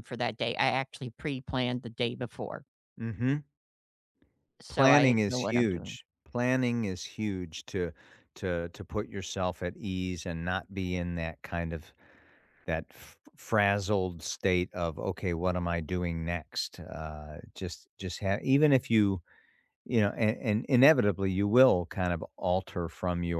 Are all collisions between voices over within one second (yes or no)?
no